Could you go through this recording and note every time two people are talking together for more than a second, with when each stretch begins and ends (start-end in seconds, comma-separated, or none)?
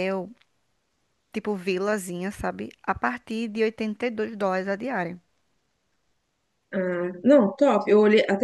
none